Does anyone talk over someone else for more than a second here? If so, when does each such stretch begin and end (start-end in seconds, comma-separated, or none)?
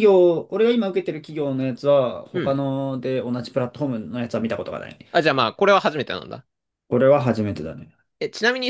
none